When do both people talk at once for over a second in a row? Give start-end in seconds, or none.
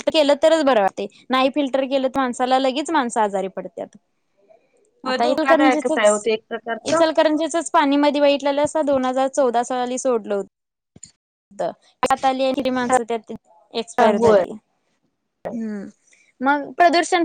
none